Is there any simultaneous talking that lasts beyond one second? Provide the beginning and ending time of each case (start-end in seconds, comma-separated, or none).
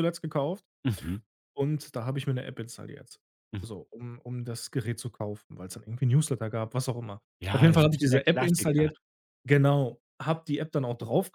7.4-8.9